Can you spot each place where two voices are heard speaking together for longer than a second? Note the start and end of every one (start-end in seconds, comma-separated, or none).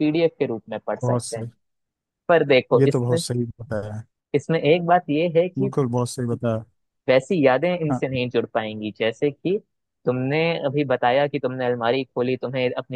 none